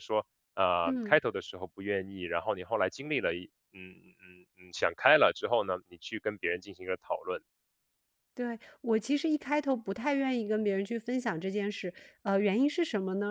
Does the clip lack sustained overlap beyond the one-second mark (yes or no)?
yes